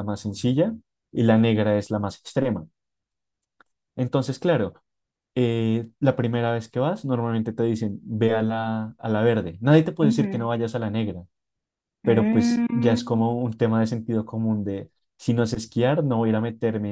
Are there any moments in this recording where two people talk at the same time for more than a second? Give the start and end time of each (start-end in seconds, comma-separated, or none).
12.0-13.3